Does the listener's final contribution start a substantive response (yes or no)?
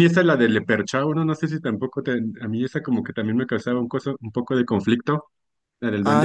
yes